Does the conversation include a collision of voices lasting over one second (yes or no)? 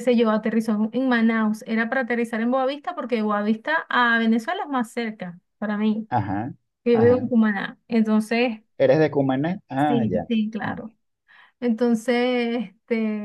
no